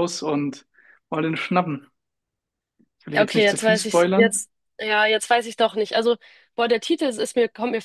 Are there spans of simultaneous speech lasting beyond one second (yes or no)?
yes